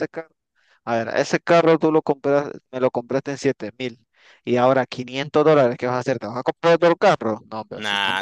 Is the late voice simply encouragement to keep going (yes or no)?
no